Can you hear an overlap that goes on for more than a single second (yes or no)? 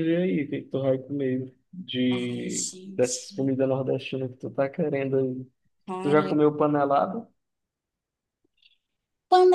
yes